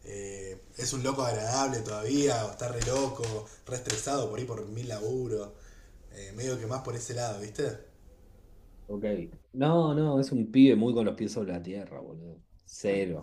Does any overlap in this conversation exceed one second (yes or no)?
no